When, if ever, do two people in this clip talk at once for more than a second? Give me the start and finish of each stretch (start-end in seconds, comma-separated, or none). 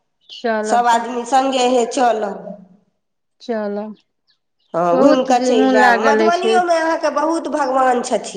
4.9-6.5